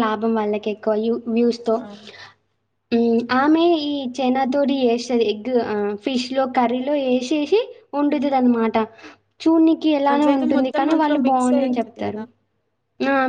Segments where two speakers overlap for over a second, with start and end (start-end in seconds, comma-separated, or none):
10.1-12.2